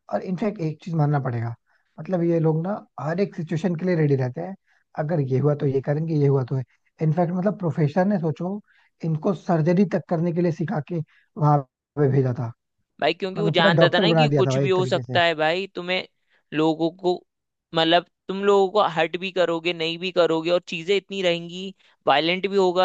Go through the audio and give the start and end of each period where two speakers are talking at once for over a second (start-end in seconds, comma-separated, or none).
13.4-15.2